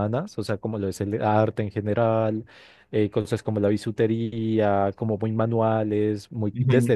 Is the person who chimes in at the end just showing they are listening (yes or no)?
yes